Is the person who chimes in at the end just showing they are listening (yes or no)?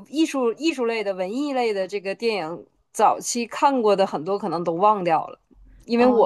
yes